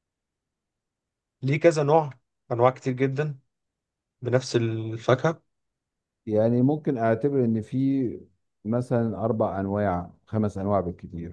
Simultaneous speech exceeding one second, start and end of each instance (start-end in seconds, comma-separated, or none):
none